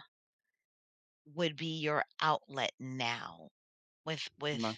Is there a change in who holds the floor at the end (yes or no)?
no